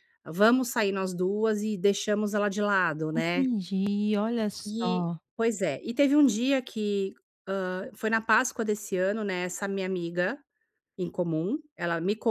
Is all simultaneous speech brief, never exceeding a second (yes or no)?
yes